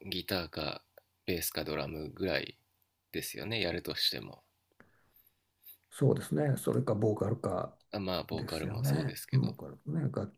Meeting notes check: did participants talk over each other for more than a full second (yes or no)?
yes